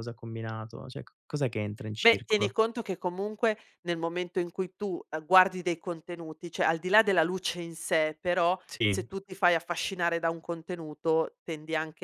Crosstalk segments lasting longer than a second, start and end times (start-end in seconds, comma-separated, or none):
none